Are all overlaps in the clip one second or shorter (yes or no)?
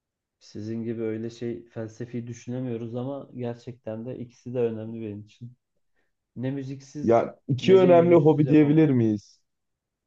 no